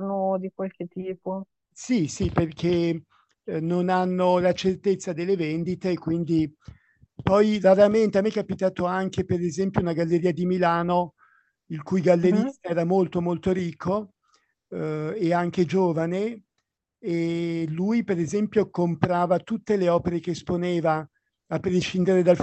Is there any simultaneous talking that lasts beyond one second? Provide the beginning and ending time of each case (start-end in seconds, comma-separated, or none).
none